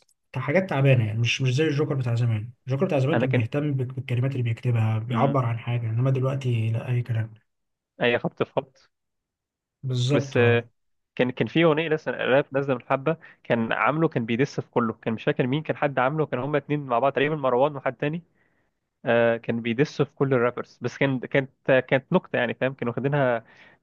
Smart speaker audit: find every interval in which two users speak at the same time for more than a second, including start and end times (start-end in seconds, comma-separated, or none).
none